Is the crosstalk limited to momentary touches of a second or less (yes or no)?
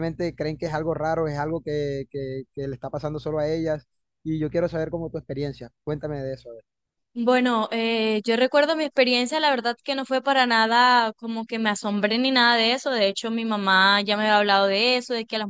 yes